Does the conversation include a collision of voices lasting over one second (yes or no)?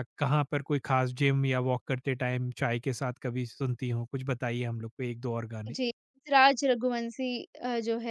no